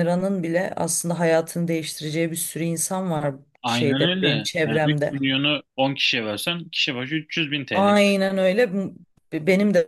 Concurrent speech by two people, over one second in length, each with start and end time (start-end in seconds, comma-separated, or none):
3.6-5.3